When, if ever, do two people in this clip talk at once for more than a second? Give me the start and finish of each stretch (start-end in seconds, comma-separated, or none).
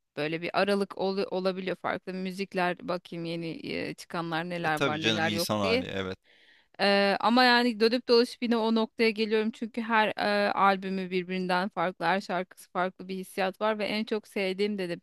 4.6-5.8